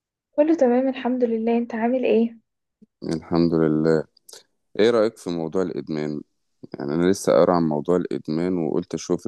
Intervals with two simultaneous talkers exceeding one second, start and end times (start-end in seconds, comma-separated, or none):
none